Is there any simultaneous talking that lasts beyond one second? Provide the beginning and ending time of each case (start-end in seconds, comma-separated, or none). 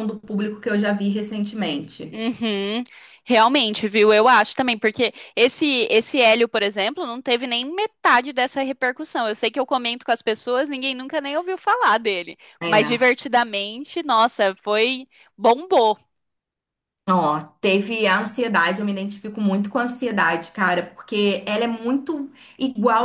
none